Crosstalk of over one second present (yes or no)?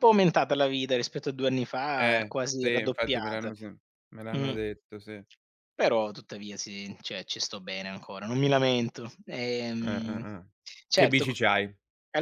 yes